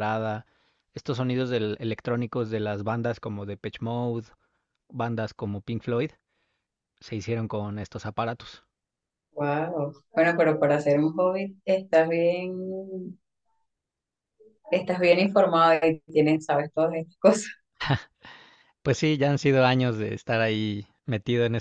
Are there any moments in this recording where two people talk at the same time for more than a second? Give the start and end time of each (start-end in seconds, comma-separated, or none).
none